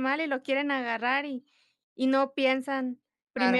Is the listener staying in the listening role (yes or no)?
yes